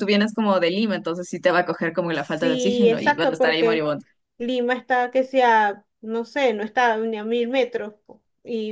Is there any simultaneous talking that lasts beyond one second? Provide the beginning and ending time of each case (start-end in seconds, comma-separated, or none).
2.1-3.9